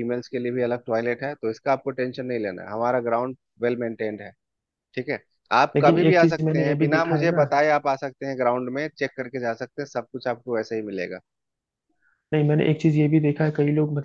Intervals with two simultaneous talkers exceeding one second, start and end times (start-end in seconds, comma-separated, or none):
5.8-7.5